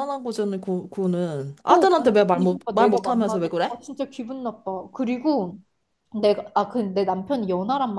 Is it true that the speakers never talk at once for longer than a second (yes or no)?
no